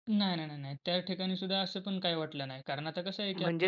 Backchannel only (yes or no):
yes